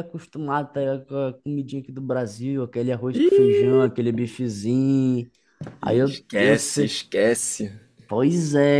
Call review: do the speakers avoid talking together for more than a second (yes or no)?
no